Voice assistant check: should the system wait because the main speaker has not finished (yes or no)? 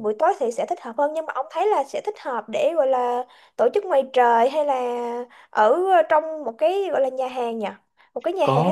no